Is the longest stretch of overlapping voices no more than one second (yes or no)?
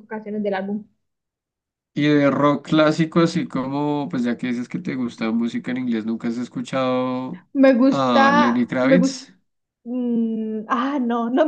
no